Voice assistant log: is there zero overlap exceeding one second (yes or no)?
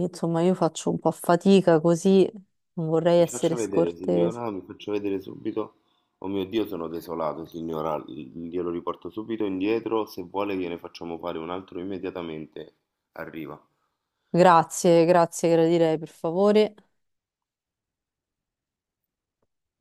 no